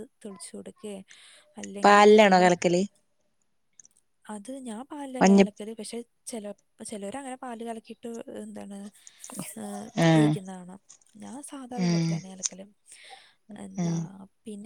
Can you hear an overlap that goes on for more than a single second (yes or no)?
no